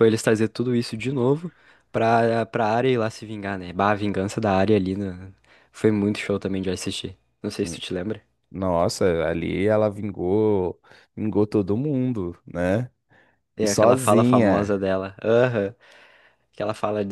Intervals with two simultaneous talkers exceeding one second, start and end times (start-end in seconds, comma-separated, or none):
13.6-14.8